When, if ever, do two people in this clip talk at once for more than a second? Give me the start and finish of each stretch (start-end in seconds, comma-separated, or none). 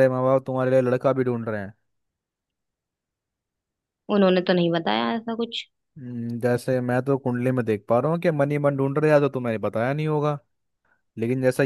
none